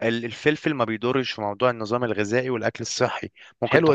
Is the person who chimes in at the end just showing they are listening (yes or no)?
yes